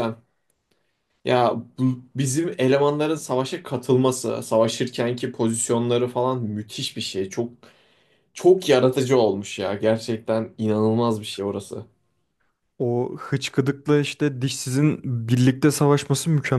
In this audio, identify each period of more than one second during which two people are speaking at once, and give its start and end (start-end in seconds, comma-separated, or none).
none